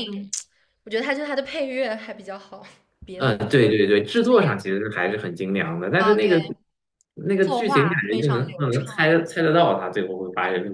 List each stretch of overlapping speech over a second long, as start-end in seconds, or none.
7.4-9.1